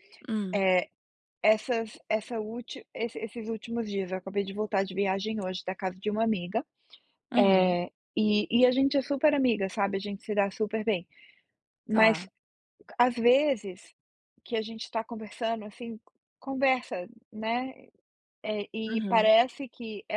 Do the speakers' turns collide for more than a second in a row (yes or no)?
no